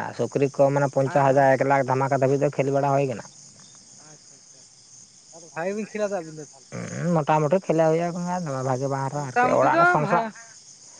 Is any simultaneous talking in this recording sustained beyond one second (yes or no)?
no